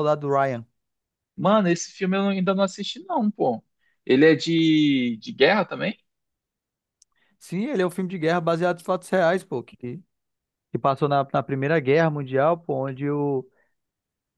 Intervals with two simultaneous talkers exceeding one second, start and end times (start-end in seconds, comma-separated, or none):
none